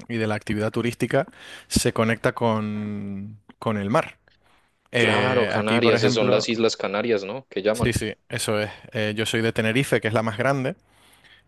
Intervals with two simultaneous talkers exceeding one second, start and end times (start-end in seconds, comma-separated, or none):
5.0-6.5